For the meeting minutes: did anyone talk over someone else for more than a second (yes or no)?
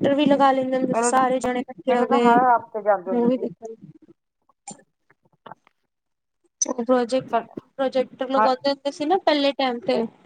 no